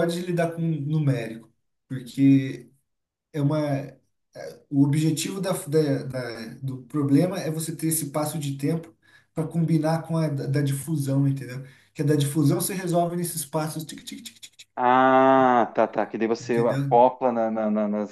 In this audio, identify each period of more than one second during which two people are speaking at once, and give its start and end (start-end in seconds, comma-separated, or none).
none